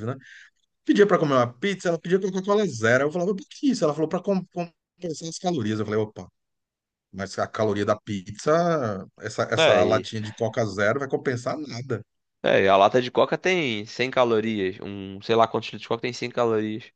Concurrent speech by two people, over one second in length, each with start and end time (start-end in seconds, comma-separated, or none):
none